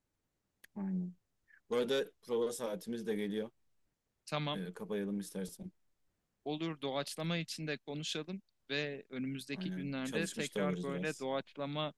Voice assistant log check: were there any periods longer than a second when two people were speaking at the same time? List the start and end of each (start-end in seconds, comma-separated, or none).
9.5-11.3